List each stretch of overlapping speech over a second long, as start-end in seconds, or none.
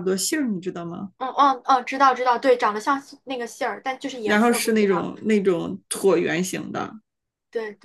4.2-5.5